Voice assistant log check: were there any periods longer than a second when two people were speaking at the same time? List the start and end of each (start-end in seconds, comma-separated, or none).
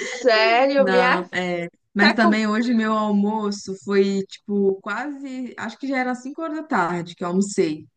none